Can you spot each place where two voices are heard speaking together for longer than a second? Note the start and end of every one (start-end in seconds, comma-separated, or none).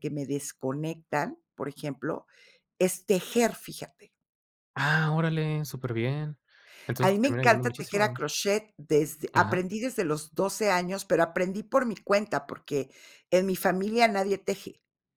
7.0-8.2